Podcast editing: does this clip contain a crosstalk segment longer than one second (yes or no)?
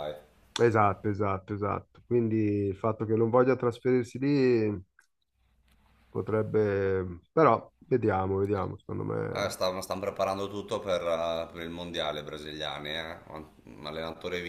no